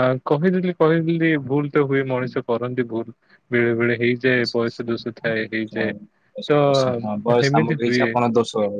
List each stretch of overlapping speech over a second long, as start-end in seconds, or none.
none